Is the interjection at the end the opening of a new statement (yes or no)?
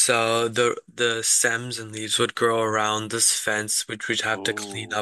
no